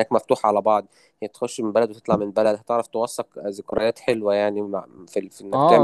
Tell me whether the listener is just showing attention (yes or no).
no